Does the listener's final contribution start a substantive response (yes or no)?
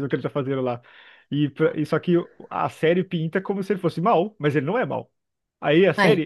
no